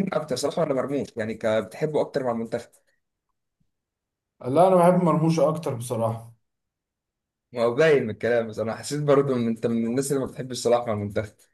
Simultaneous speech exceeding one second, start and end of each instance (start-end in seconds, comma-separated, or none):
none